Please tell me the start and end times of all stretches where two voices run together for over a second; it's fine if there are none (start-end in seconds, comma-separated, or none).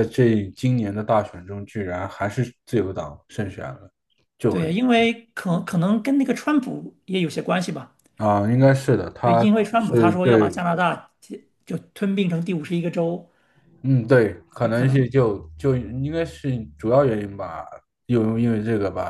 9.2-10.7